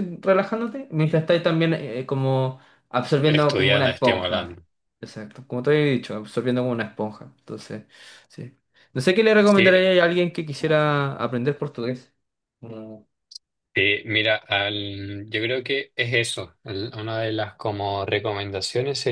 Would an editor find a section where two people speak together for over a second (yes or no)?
yes